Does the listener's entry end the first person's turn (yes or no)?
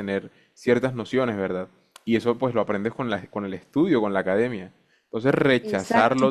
no